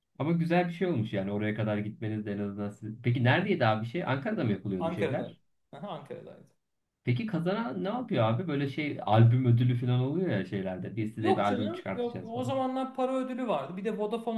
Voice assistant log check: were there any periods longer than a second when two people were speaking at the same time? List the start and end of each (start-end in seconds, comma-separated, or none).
11.2-12.6